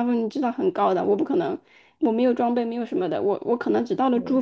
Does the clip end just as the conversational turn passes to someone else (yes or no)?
no